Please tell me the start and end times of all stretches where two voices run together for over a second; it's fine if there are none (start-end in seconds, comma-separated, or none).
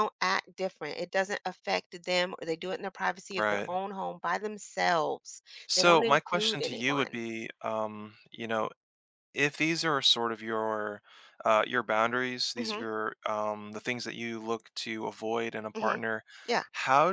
5.8-7.2